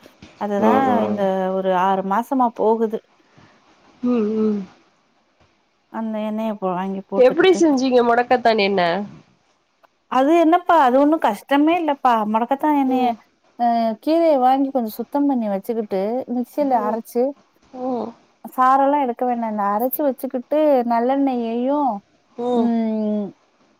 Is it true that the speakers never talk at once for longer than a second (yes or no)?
yes